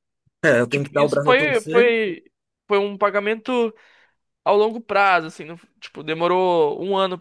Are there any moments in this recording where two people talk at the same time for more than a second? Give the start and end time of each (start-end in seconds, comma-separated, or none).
0.7-1.9